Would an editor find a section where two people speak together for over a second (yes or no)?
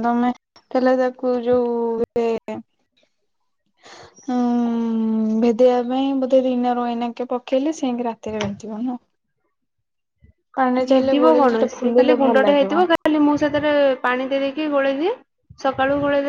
yes